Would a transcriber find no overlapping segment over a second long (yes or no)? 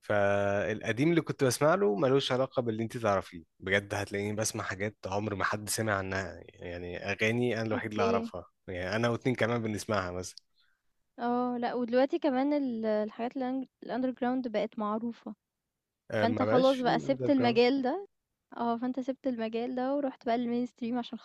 no